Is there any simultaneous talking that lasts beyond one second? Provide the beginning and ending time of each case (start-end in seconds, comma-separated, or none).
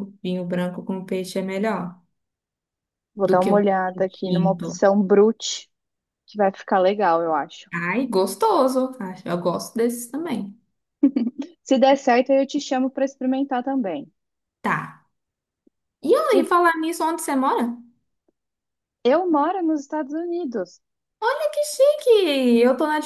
3.2-4.8